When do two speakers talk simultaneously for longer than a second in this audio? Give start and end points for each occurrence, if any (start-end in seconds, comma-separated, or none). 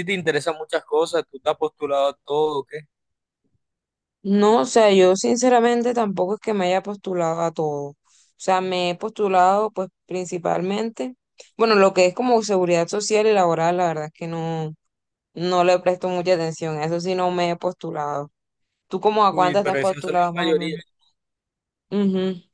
19.3-20.8